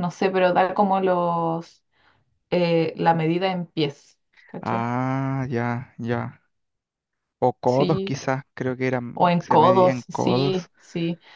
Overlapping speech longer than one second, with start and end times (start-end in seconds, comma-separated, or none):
9.1-10.7